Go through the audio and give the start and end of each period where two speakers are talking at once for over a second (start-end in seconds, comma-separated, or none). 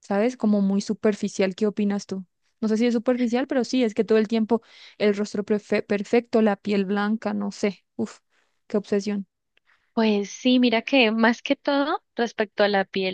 none